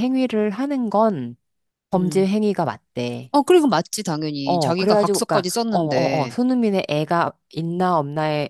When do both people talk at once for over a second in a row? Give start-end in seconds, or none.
4.5-6.3